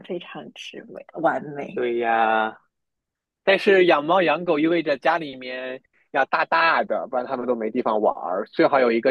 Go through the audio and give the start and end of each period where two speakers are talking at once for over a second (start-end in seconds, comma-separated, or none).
none